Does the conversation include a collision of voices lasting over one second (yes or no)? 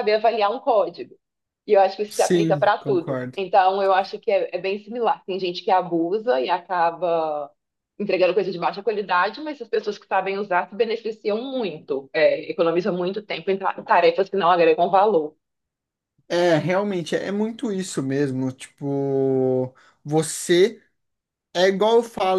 yes